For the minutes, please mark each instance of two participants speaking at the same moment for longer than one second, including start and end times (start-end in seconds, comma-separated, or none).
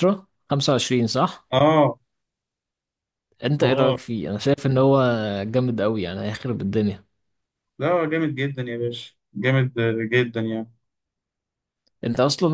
none